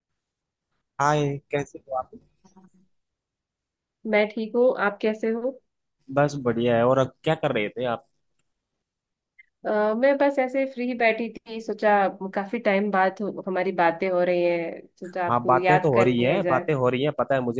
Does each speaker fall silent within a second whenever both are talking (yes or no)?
no